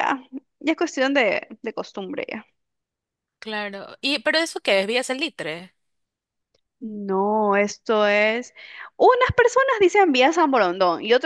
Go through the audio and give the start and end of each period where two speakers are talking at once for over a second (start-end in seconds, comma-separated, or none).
none